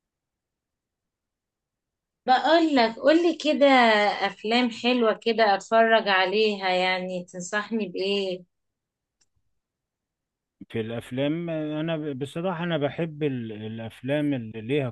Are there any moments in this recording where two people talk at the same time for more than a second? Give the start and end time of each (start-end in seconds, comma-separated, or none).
none